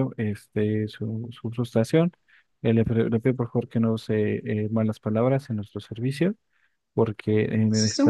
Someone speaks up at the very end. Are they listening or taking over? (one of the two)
taking over